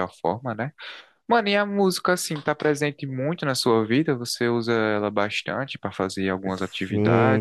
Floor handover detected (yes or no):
yes